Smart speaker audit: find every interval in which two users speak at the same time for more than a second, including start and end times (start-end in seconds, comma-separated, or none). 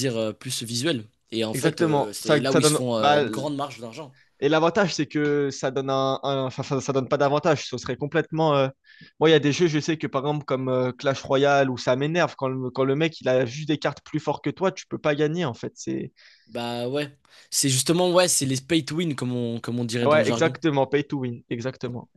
1.5-3.2